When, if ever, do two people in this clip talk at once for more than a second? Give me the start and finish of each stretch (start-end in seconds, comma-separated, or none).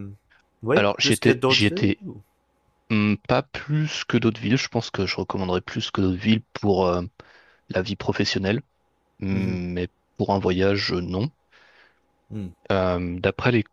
0.8-2.0